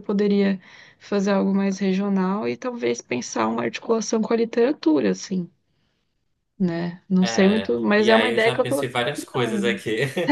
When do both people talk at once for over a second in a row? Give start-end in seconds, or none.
7.2-9.8